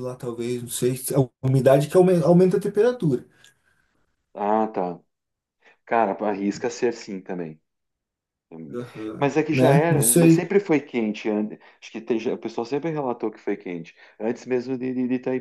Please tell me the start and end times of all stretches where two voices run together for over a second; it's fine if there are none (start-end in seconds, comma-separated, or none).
9.2-10.5